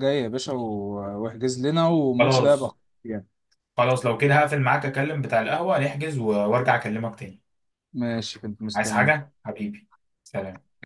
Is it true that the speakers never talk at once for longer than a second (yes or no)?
yes